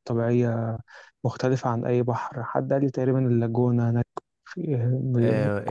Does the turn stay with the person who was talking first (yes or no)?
no